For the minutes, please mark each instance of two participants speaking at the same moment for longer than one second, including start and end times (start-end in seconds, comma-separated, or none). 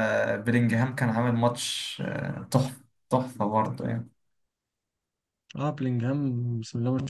none